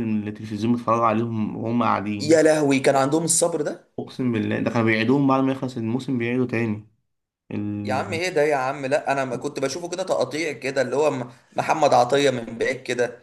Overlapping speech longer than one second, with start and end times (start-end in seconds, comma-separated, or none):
none